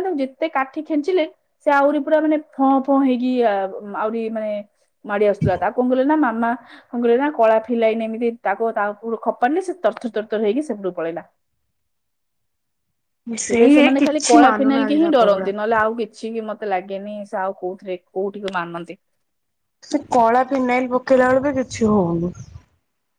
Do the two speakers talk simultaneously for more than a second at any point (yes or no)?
yes